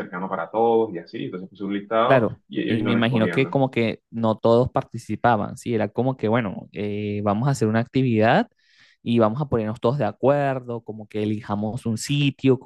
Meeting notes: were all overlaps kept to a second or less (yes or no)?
no